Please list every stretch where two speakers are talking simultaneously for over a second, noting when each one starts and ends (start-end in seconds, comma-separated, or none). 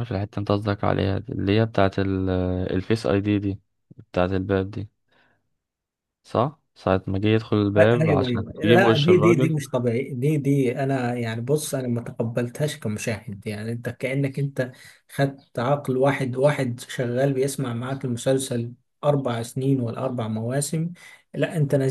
7.7-9.6